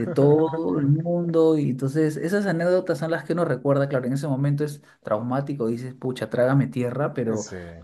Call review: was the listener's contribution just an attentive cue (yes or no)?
yes